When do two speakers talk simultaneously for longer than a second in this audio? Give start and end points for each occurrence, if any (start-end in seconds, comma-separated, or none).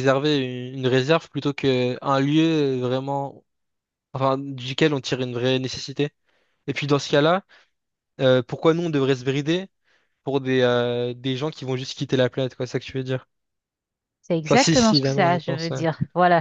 14.5-15.8